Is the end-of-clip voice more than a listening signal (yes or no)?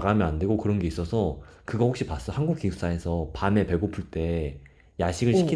no